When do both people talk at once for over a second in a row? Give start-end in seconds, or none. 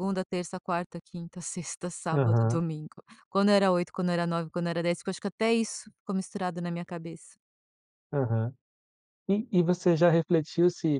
none